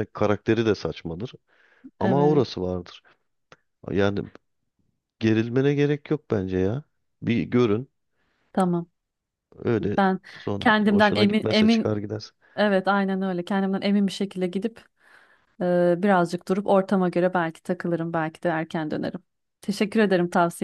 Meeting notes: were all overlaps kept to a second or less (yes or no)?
no